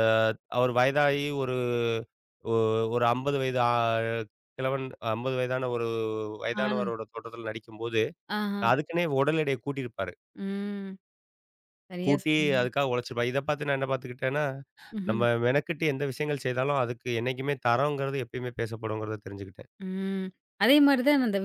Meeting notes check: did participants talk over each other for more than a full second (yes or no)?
no